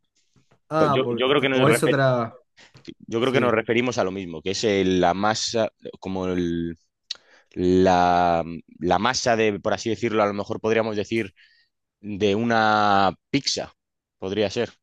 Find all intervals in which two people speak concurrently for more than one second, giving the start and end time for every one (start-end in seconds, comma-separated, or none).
0.8-2.0